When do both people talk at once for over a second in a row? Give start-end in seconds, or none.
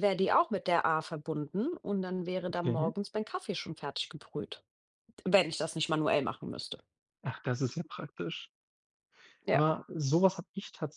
none